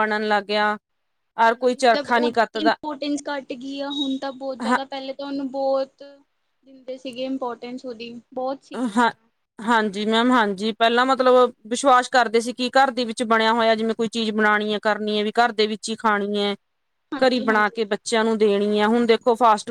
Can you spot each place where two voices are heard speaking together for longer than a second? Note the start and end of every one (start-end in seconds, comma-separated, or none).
1.5-2.7